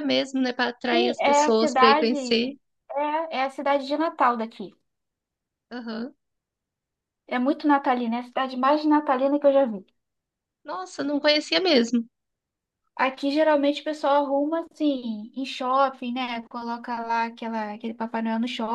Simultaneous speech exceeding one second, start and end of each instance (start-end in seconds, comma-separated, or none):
0.9-2.4